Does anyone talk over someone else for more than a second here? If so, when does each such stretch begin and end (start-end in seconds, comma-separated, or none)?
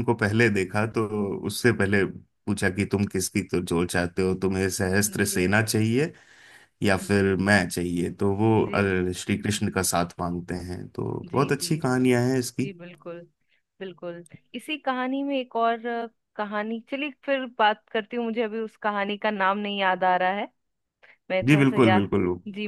none